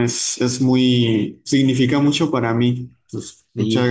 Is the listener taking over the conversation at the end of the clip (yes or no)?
yes